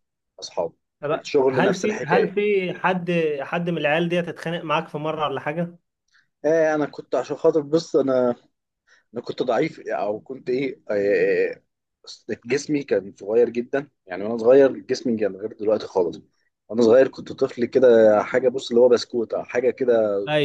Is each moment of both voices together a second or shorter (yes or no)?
no